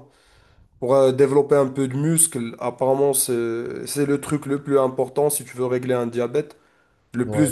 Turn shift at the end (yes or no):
no